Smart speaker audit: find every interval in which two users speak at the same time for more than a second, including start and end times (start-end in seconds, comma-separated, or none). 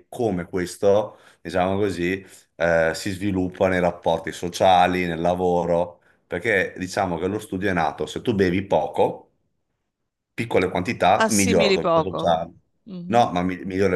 11.2-12.4